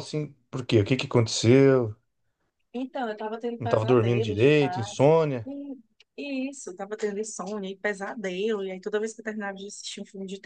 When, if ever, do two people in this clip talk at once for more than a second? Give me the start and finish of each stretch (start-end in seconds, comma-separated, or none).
3.6-5.1